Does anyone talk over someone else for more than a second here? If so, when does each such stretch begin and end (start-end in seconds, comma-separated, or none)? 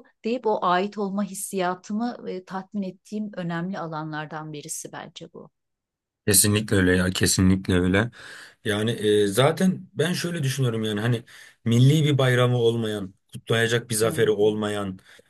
none